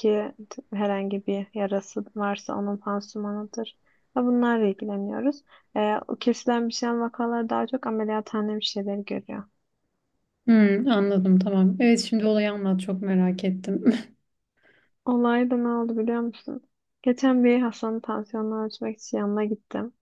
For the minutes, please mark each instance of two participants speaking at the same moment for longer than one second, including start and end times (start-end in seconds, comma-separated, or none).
none